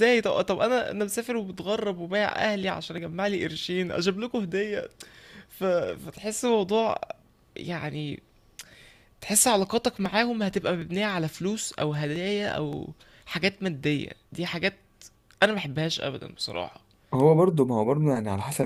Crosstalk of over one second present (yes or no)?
no